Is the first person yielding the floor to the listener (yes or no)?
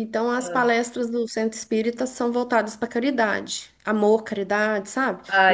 no